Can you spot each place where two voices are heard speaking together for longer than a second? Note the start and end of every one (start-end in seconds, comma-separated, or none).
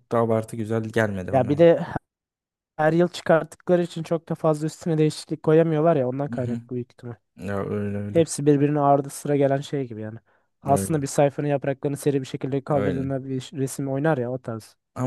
none